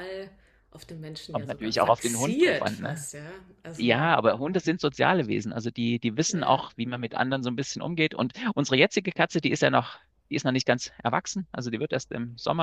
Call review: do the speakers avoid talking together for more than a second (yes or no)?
no